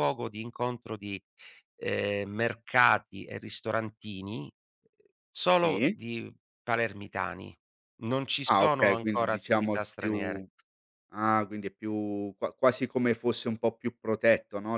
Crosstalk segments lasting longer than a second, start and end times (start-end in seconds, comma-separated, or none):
8.5-10.4